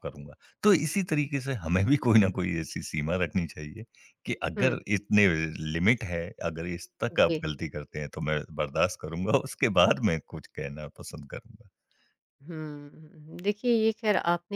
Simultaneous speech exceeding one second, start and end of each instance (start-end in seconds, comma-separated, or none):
none